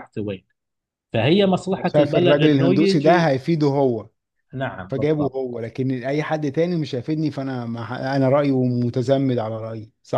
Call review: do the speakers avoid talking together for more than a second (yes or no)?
no